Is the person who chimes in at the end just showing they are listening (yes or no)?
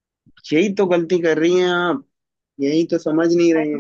yes